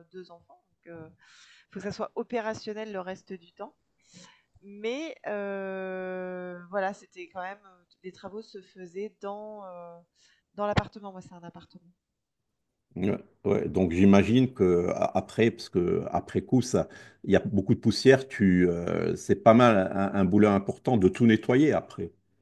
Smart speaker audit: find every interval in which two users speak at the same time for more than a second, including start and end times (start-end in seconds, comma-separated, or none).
none